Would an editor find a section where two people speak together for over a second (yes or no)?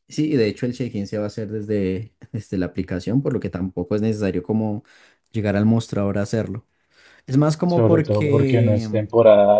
yes